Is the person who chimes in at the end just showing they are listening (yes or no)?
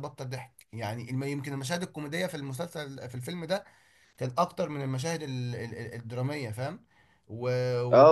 no